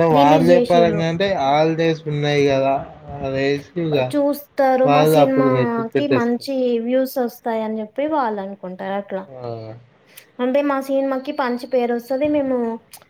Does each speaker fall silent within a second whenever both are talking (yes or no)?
no